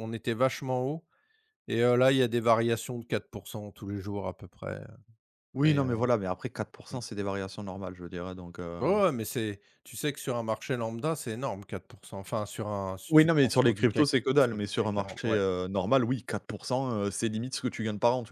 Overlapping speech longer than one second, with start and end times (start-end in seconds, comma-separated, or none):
13.1-15.4